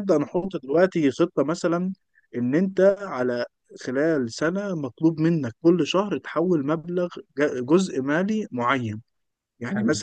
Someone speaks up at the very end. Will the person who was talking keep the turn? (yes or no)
yes